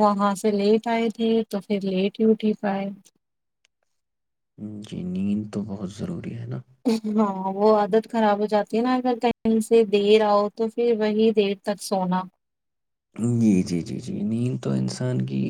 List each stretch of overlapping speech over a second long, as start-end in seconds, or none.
none